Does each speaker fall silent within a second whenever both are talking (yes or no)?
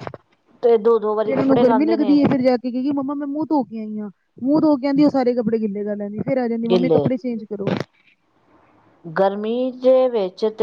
no